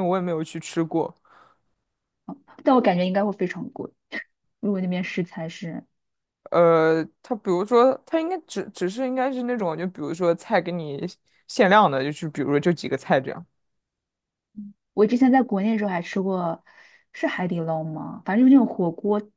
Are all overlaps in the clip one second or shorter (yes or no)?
yes